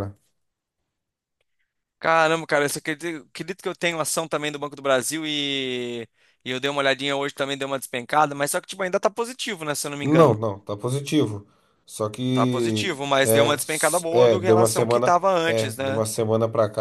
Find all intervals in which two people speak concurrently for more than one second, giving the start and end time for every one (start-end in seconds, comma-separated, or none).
12.3-16.0